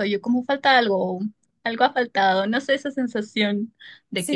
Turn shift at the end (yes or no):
no